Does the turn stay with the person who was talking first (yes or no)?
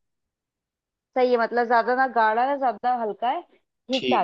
no